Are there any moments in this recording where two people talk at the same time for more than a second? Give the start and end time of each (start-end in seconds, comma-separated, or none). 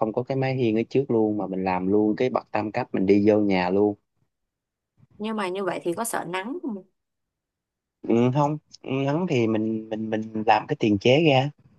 none